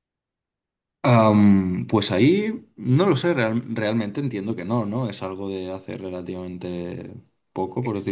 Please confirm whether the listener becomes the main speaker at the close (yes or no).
yes